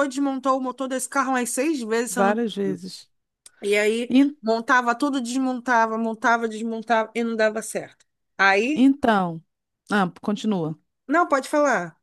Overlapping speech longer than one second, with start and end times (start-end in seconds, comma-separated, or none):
none